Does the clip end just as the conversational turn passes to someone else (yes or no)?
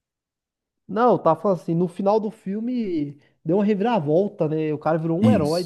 yes